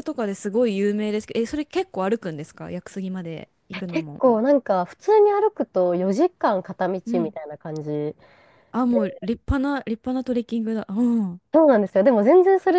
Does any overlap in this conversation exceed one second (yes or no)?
no